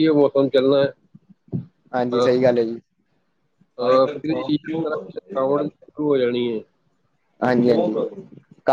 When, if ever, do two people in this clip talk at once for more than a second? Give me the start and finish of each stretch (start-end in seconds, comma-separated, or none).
3.8-5.9